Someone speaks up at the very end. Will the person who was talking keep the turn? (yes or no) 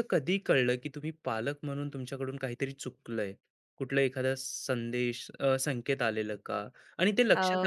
yes